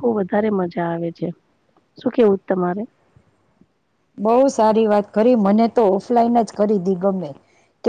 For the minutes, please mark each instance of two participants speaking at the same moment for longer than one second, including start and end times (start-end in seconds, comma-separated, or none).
none